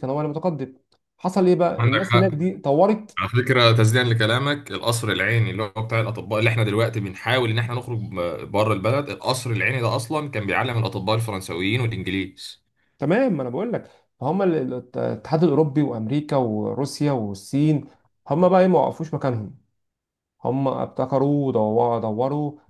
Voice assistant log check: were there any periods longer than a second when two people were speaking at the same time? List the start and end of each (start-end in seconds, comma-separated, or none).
none